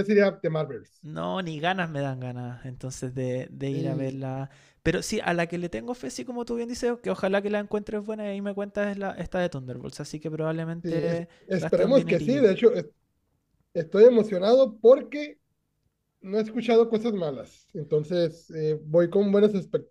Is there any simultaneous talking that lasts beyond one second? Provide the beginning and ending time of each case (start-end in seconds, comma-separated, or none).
10.8-12.6